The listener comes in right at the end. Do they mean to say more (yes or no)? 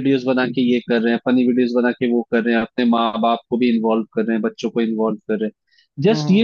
no